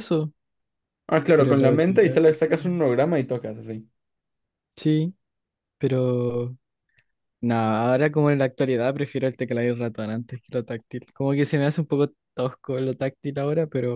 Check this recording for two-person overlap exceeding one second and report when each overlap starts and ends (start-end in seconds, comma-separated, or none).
1.3-2.8